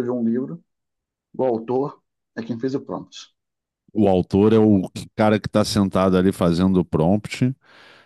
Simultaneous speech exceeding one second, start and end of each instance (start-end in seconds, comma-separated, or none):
none